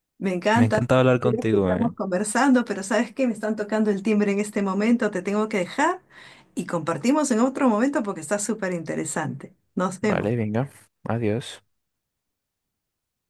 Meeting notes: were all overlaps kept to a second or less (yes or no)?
no